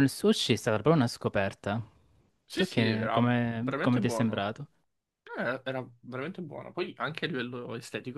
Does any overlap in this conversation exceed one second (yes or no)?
yes